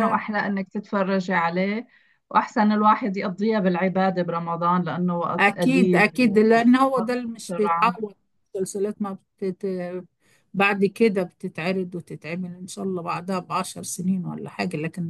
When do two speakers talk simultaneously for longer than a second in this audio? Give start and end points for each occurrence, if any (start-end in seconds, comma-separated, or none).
5.4-8.0